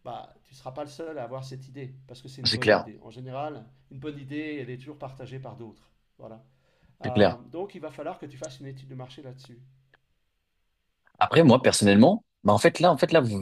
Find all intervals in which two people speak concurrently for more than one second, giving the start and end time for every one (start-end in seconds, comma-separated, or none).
none